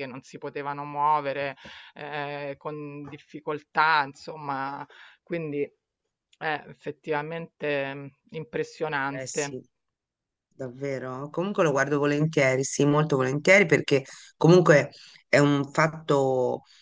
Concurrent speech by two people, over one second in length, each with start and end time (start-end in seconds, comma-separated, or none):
none